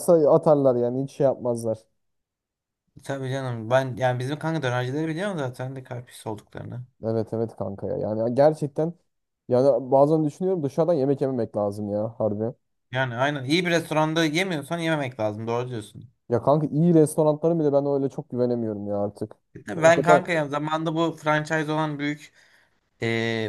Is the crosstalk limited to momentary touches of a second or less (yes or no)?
yes